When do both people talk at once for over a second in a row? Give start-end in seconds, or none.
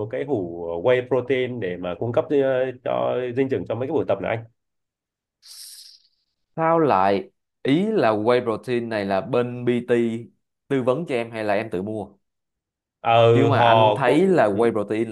13.3-14.6